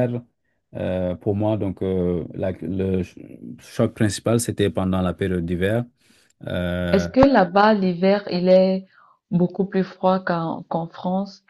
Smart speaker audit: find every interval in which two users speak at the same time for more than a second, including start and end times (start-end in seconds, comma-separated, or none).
none